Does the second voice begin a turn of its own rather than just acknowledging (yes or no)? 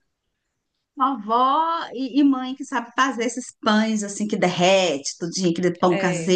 no